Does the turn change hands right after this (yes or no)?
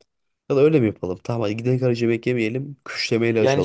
no